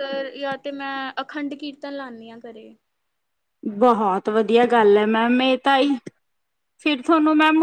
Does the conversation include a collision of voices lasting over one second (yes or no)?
no